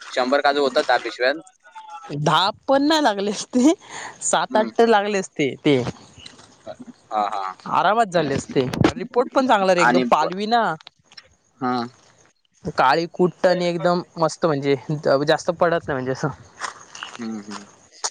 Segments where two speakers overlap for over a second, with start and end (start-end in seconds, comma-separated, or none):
none